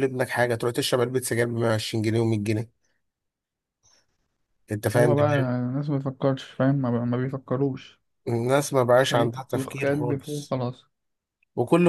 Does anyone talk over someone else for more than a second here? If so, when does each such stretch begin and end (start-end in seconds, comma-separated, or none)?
8.9-10.6